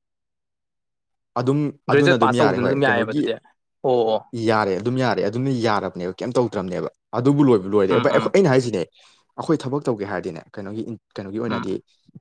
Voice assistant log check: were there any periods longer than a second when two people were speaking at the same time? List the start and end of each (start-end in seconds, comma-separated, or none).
1.9-3.2